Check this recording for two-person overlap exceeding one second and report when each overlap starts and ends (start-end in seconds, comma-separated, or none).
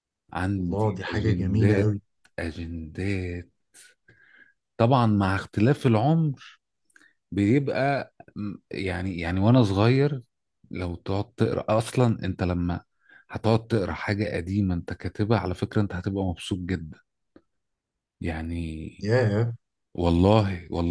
0.6-2.0